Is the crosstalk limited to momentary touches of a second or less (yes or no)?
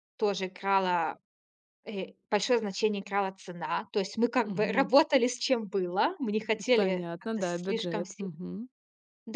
no